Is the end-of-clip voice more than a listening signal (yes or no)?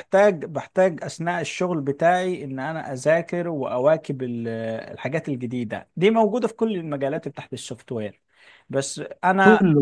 no